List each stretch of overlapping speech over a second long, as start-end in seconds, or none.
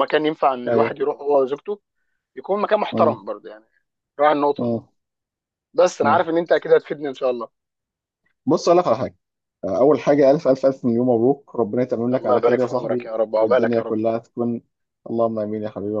12.2-13.9